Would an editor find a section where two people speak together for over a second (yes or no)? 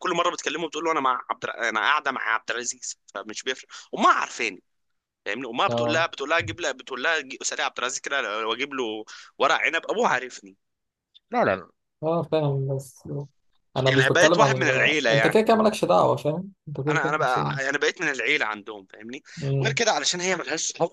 yes